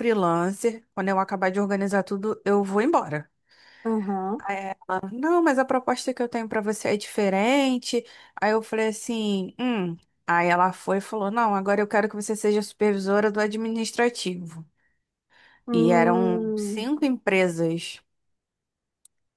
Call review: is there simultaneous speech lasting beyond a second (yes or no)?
yes